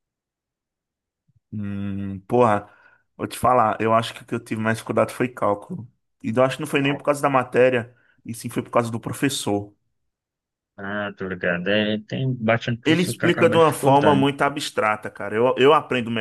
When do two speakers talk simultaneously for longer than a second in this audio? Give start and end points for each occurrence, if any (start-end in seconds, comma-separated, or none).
12.8-14.3